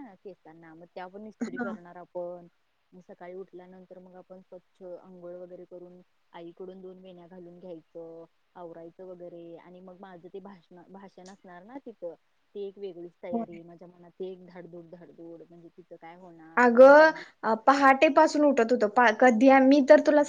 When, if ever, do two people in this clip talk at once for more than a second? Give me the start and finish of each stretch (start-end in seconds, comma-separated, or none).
none